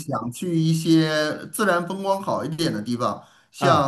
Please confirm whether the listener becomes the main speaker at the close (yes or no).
no